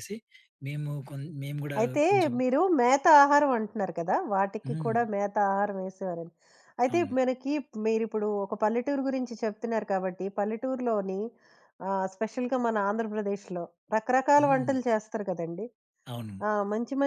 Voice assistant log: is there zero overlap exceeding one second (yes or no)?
yes